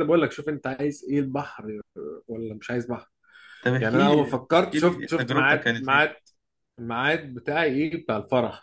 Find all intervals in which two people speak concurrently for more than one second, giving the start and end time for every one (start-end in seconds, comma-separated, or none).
3.8-6.1